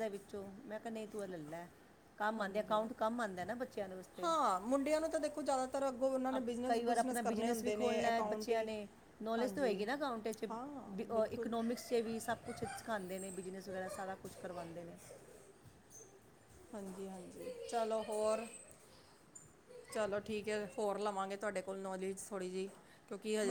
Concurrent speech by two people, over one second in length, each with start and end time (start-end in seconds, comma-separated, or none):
6.7-8.7